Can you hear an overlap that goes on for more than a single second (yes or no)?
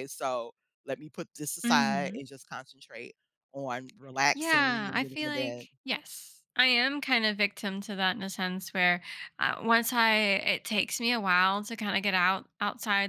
yes